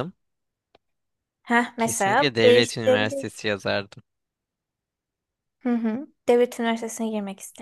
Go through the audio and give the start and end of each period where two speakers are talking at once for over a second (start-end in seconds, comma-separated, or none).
1.8-3.3